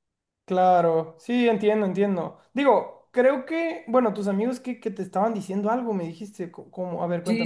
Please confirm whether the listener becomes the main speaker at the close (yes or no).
yes